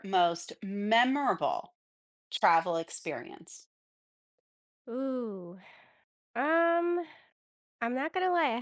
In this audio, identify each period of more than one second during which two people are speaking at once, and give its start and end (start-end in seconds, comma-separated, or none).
none